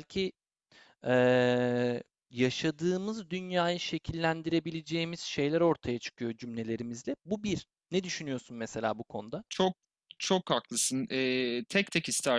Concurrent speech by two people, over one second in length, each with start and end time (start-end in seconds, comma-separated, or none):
none